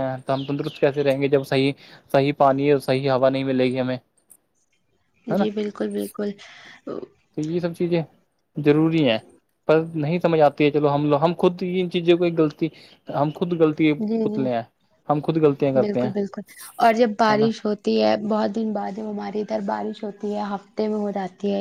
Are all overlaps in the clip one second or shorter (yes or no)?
yes